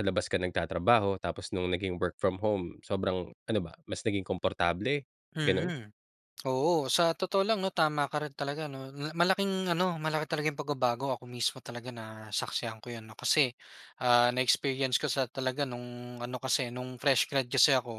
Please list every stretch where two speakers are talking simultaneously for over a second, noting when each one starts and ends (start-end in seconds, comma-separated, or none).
none